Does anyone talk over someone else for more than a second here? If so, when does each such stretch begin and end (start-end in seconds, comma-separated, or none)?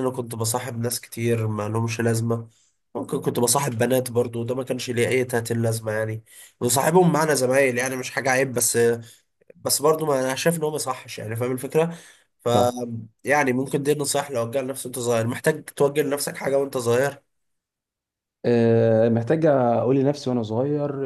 none